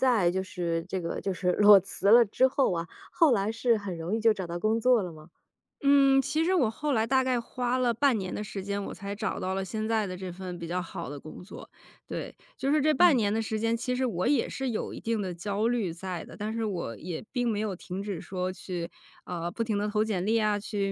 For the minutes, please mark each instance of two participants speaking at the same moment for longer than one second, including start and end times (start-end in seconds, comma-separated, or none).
none